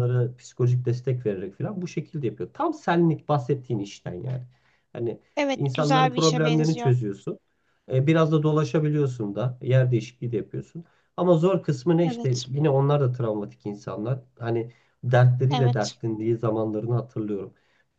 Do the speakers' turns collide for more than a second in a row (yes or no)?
yes